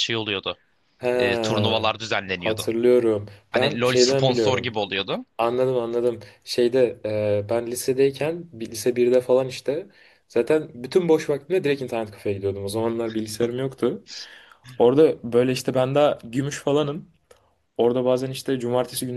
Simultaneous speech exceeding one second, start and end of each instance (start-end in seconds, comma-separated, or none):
3.5-4.8